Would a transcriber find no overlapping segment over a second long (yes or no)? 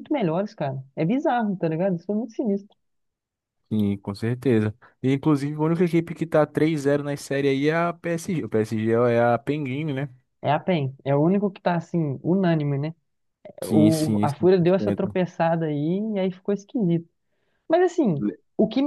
no